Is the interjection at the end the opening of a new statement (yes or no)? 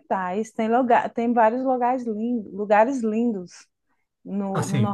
yes